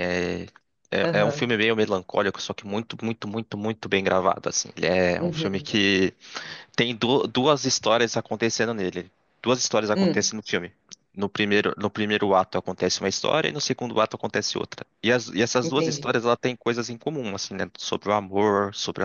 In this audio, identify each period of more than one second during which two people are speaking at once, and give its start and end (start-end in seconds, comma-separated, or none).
none